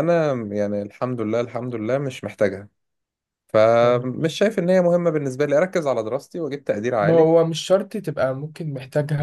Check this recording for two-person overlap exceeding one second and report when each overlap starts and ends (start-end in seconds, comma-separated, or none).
none